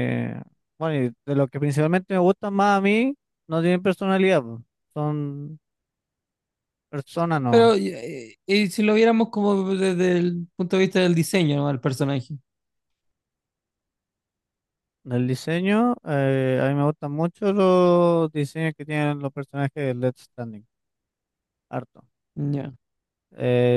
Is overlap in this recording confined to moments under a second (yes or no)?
yes